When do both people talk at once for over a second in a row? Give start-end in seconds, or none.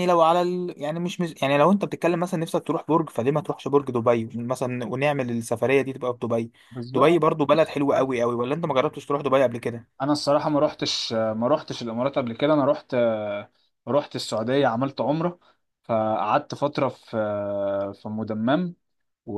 none